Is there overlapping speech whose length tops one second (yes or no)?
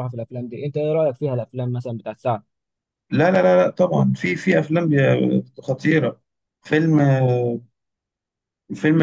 no